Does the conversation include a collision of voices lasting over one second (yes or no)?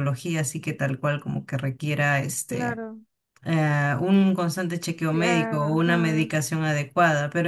yes